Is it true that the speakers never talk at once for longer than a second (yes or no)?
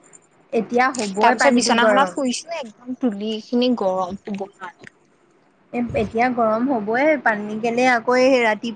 no